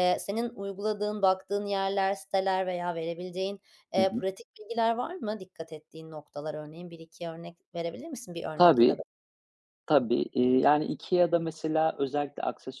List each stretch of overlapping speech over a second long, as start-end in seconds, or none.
none